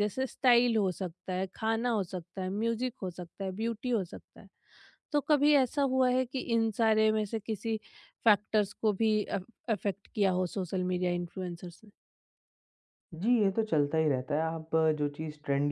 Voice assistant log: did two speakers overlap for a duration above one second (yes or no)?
no